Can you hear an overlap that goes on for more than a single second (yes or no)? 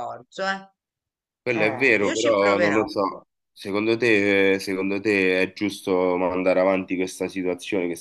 yes